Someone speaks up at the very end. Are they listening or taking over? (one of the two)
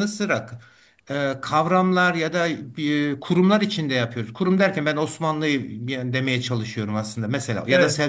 listening